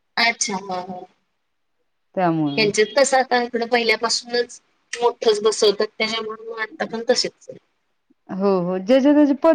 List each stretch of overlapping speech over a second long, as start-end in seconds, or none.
none